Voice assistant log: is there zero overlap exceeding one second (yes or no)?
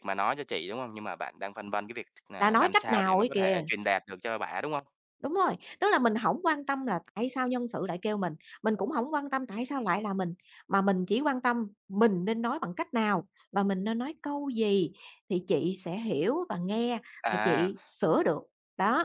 no